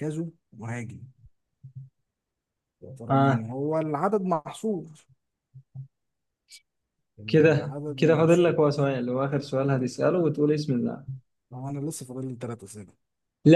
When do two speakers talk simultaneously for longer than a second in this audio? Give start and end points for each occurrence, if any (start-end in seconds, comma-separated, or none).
7.3-8.6